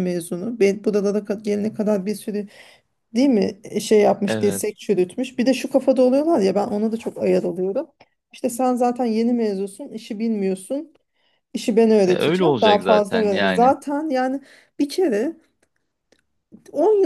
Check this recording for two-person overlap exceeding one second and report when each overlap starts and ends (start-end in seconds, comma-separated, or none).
12.1-13.8